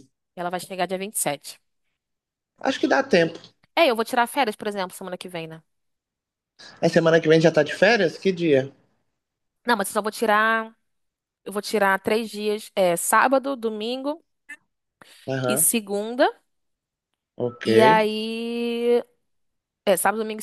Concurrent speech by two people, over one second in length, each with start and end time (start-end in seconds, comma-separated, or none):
none